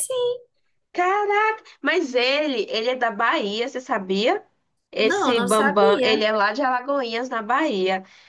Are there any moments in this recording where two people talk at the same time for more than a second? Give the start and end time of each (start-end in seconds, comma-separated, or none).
5.0-6.3